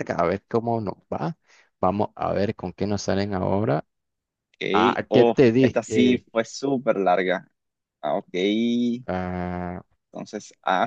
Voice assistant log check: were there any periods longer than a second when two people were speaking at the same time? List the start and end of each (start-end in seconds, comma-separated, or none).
4.7-6.2